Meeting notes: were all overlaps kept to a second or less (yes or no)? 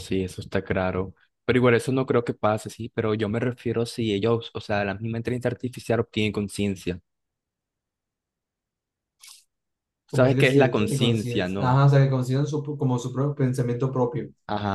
no